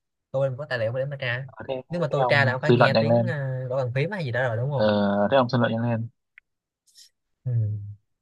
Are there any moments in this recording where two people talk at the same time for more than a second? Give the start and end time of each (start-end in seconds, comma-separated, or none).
2.1-3.3